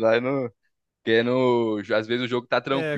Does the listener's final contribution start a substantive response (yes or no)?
no